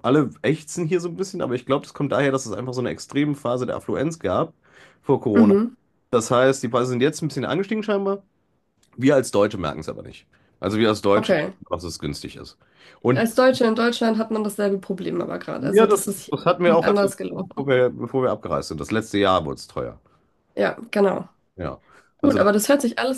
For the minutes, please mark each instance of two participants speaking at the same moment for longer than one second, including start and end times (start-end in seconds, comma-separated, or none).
15.6-17.7